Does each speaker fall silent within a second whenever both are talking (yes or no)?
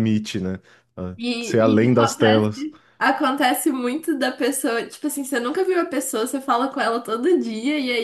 no